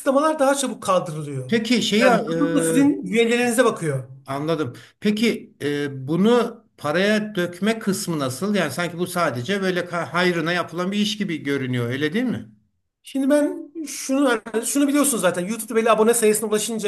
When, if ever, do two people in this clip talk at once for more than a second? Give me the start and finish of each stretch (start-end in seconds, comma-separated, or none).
none